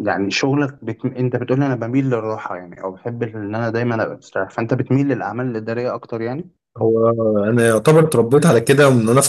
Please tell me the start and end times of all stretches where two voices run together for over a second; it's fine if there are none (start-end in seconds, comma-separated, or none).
none